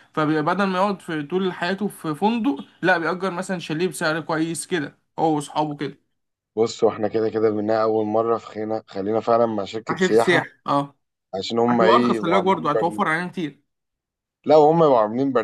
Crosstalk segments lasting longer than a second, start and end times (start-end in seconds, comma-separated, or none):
11.7-13.0